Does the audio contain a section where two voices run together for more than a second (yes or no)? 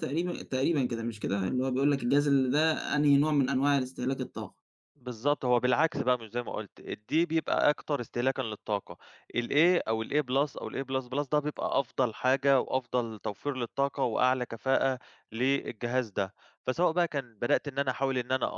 no